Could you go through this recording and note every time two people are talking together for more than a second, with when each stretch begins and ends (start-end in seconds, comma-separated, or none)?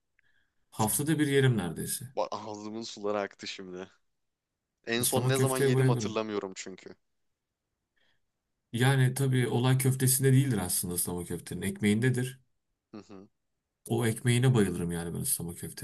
5.0-6.2